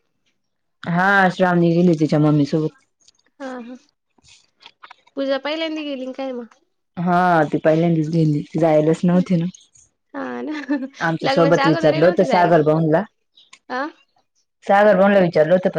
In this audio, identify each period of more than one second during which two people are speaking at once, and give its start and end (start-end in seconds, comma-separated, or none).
11.3-12.6